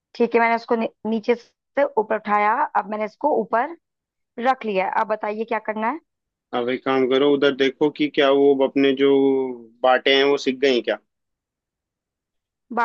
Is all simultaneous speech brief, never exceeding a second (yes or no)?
yes